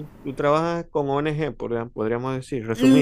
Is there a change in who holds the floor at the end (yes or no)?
yes